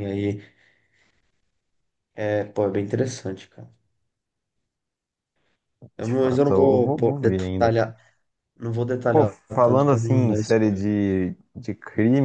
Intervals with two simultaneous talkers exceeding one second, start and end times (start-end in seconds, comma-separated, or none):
6.0-7.9, 9.1-10.8